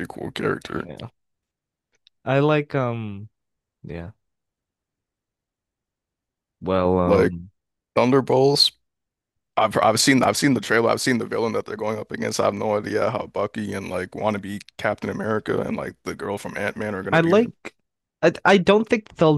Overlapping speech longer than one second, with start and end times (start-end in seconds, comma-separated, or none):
none